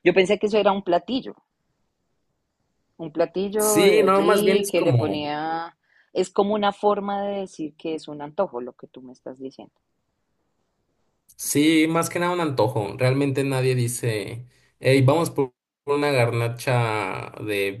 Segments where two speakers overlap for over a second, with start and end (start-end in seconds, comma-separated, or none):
3.6-5.1